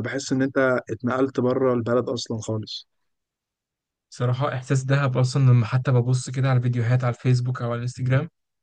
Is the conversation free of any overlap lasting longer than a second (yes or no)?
yes